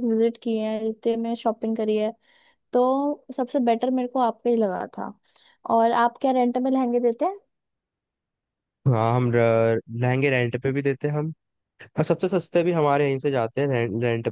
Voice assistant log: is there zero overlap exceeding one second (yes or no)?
yes